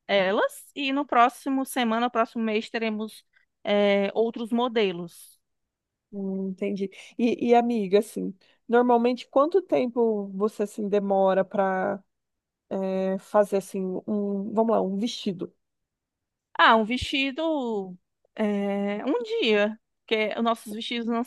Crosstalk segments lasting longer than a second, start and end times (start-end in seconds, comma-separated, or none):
none